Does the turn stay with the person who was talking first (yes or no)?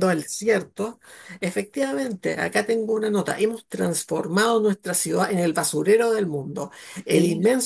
yes